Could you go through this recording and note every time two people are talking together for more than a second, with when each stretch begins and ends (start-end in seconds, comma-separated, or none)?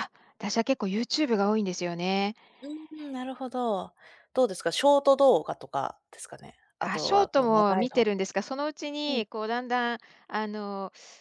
6.8-8.1